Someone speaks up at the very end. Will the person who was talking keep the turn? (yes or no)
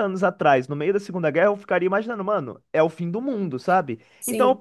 yes